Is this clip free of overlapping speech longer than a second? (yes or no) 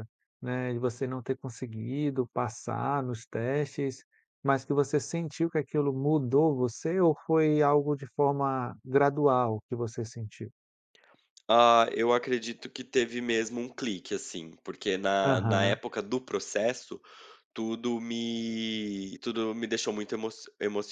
yes